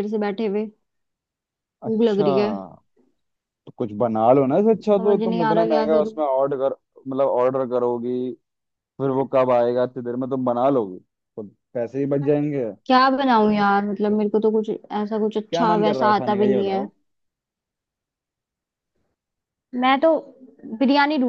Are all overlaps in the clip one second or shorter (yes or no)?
no